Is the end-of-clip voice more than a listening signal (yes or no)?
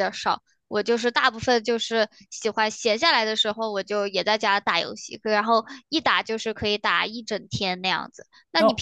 no